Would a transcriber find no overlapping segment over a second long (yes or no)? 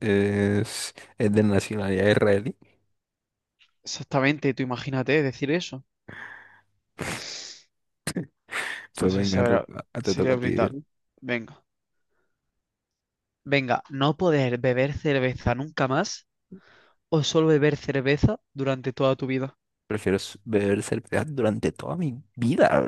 no